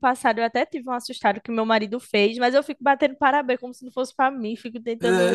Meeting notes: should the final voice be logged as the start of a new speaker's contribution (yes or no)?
no